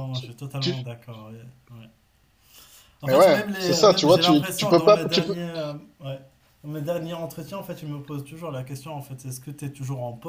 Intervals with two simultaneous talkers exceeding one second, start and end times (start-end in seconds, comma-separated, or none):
3.0-5.3